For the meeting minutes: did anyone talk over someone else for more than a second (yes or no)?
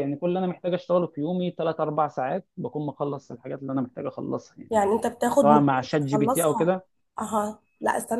yes